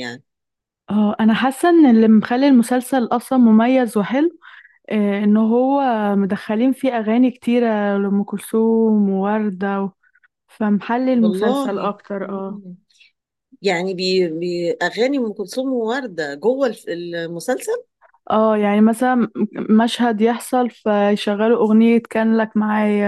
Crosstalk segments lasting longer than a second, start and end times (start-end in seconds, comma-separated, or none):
11.2-12.6